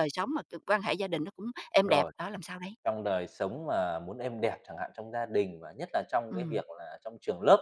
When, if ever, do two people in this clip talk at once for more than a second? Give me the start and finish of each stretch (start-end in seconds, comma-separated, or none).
none